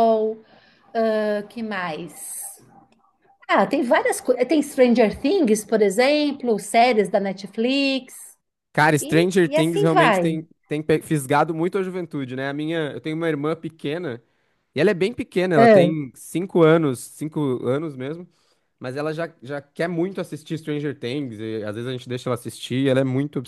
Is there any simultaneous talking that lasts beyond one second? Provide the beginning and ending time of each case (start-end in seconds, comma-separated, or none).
9.0-10.4